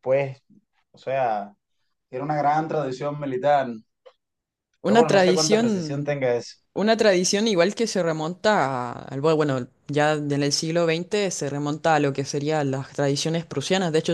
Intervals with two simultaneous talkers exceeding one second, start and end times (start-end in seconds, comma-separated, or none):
4.8-6.1